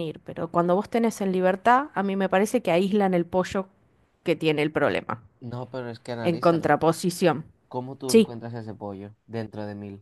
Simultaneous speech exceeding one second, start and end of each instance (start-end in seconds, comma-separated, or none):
none